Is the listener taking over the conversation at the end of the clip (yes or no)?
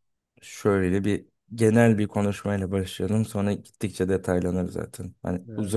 no